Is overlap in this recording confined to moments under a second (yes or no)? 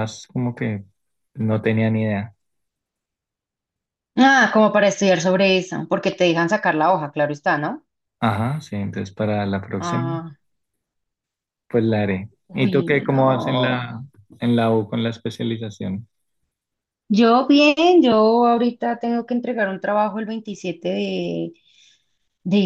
no